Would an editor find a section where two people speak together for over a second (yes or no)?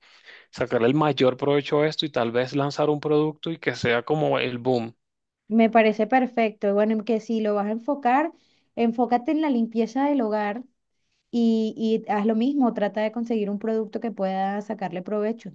no